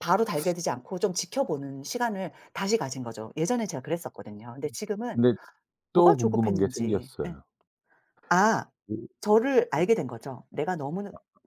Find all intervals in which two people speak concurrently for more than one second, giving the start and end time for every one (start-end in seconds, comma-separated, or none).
5.9-7.4